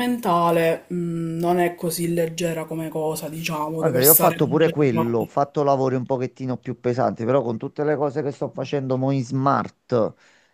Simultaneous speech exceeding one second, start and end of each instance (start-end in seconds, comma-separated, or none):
3.8-5.3